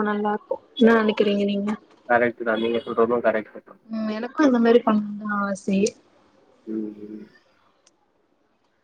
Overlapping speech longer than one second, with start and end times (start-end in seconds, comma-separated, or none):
none